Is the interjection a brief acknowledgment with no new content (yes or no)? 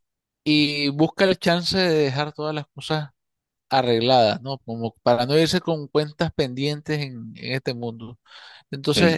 yes